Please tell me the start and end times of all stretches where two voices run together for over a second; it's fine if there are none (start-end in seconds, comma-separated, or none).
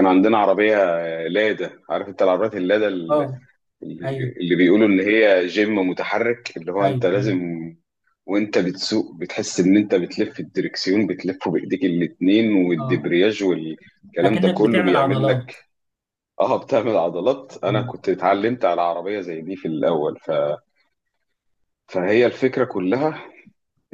14.2-15.5